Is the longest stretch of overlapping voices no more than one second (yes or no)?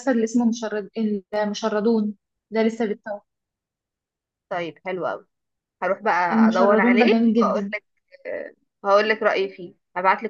no